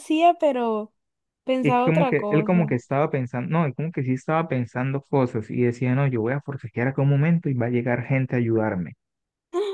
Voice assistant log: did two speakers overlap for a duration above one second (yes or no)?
yes